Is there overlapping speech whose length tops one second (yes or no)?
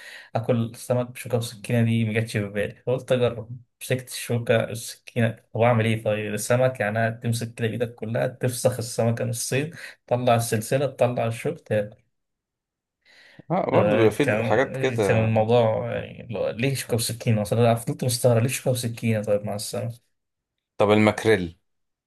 yes